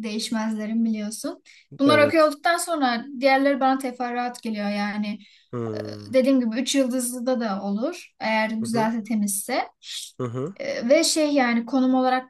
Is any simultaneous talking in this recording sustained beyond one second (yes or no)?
no